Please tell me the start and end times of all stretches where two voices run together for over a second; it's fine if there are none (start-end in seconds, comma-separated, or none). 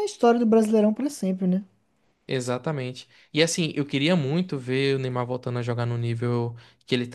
none